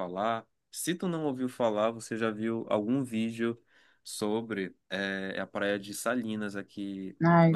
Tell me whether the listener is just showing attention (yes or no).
yes